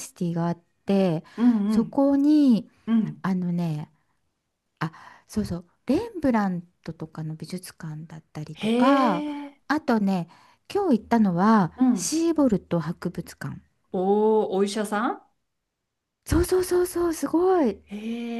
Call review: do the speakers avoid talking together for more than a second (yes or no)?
yes